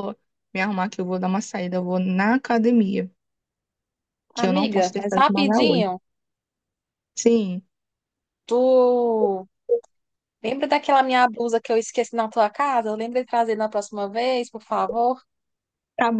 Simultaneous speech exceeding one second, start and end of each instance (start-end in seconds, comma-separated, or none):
4.3-5.8